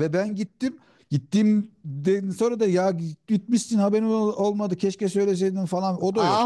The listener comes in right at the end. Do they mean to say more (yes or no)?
yes